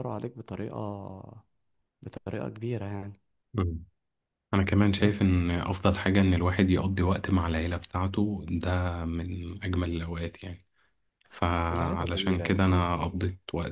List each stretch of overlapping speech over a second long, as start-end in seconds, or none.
11.7-12.9